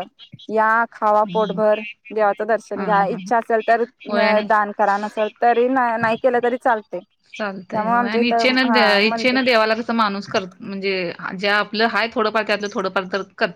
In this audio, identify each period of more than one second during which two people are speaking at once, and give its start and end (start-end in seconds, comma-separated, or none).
none